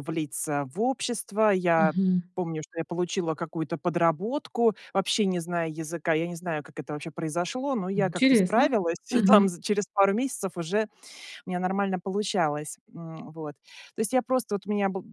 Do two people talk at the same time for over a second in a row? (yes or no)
yes